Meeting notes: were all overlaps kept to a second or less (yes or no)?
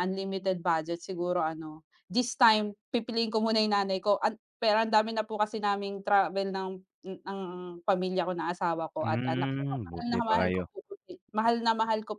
no